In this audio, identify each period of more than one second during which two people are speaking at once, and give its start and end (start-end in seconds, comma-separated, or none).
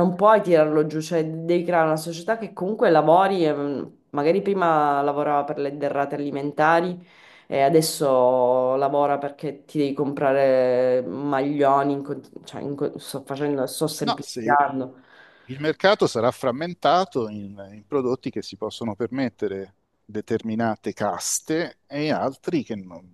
none